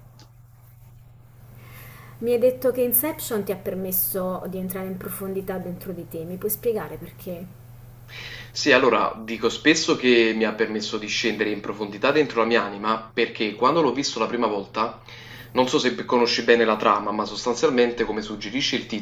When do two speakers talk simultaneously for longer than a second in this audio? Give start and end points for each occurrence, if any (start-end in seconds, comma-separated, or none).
none